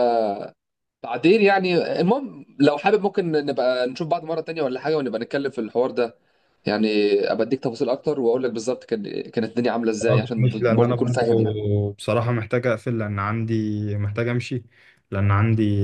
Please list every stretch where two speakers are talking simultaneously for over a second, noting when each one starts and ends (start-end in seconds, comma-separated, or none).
10.0-11.6